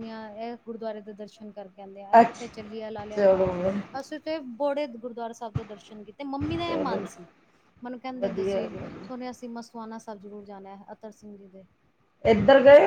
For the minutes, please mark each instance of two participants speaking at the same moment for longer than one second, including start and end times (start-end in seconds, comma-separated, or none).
2.2-3.5